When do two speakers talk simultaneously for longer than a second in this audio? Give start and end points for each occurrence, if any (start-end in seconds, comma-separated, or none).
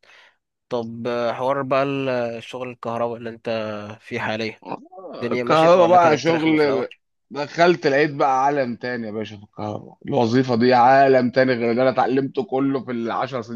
5.2-6.8